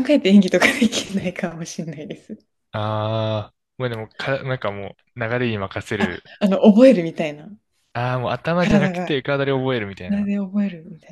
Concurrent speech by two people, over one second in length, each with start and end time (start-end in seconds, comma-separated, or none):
none